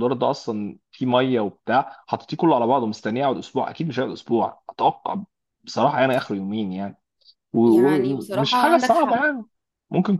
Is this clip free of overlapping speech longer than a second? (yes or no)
no